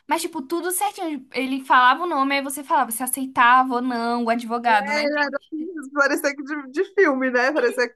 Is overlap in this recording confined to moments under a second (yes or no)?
yes